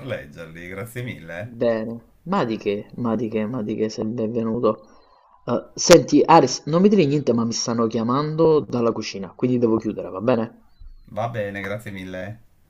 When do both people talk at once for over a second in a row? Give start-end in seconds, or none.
none